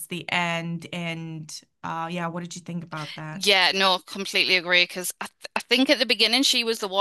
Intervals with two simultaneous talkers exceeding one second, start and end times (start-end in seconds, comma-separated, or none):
none